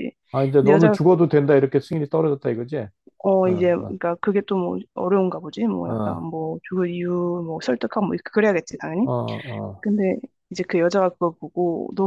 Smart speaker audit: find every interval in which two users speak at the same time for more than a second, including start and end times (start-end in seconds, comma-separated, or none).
none